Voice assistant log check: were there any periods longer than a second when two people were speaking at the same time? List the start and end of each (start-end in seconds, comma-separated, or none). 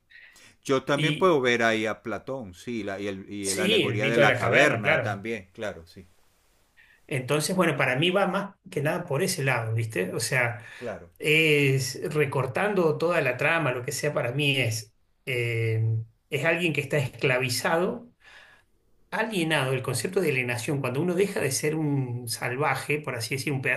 3.4-5.2